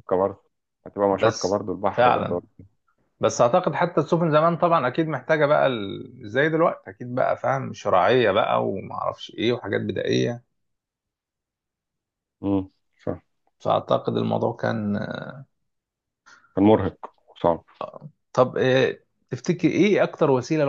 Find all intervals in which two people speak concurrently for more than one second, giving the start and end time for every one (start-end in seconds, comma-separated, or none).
1.1-2.4